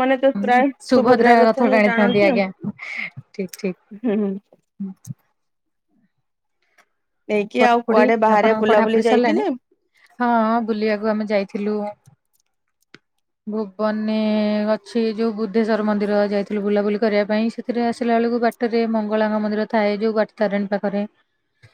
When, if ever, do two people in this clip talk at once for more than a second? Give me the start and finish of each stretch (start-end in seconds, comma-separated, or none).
7.6-9.4